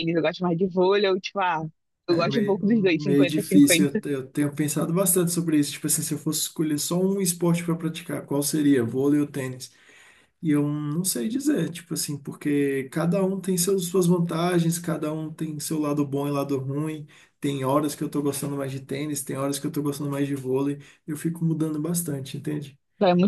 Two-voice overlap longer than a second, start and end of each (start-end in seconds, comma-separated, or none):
2.1-4.0